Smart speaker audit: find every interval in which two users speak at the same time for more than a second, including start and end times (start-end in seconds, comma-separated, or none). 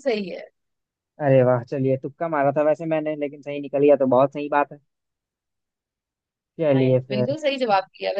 none